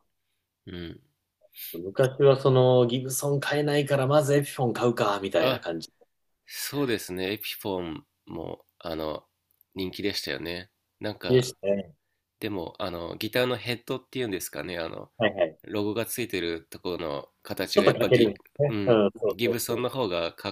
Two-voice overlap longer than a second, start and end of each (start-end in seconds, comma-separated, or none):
17.8-19.9